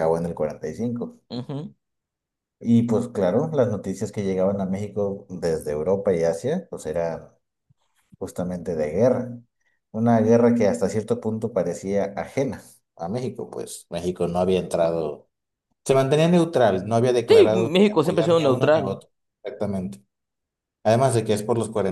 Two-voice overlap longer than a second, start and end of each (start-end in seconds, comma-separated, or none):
17.3-19.0